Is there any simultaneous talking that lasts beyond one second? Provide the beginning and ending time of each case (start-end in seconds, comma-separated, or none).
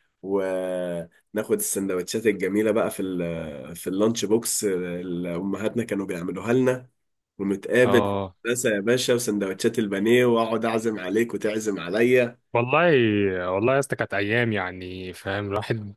none